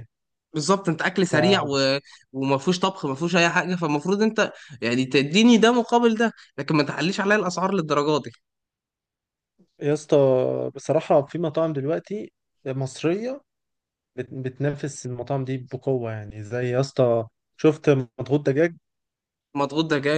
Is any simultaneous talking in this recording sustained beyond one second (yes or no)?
no